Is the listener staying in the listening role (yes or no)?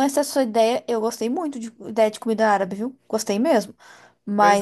yes